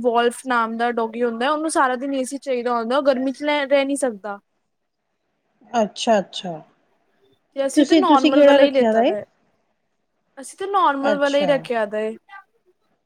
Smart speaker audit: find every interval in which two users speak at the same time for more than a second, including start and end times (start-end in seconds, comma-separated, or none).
7.7-9.1